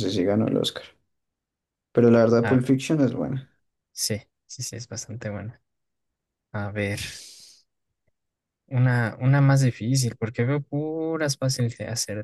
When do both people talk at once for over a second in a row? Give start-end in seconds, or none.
none